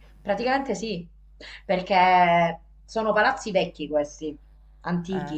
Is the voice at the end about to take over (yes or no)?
no